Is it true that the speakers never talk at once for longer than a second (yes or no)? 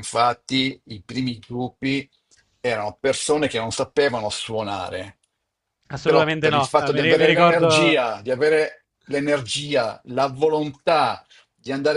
no